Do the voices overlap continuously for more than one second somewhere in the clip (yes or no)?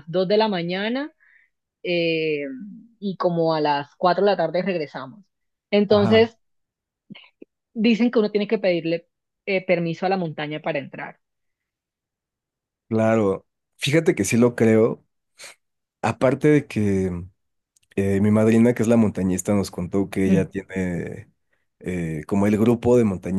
no